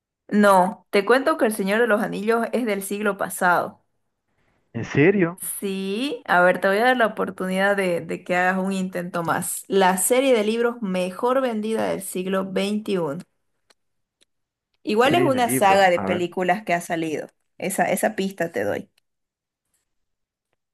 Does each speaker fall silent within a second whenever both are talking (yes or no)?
no